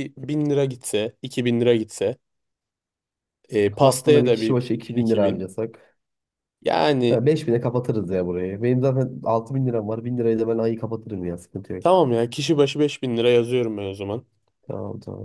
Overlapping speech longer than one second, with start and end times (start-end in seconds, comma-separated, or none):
3.8-5.4